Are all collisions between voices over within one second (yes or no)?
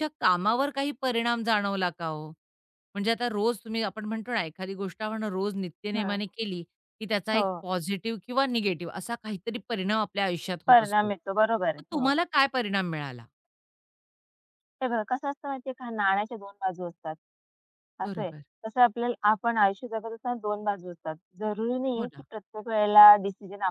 no